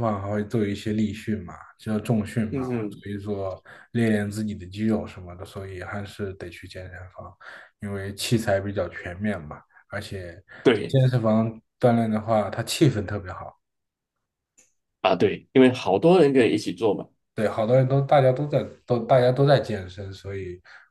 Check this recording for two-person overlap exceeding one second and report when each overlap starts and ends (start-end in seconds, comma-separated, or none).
none